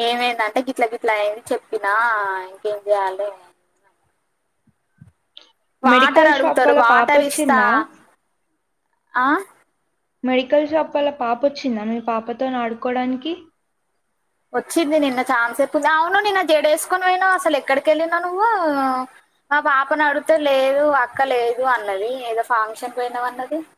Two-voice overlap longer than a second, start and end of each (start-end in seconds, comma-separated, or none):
5.9-7.6